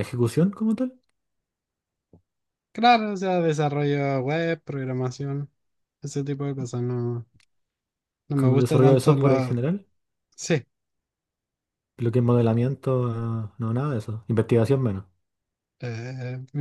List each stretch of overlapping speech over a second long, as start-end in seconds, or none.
8.3-9.5